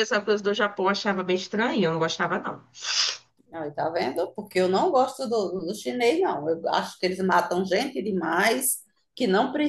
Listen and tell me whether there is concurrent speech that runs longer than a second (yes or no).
no